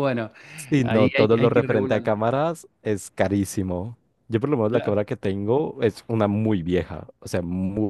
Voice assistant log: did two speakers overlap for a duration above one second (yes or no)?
yes